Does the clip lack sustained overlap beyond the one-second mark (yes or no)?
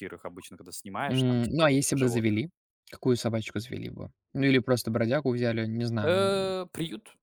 no